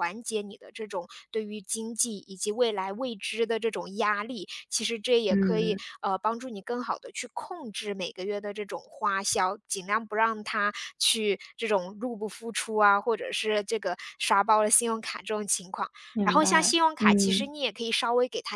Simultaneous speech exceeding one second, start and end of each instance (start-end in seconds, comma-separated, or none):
16.1-17.5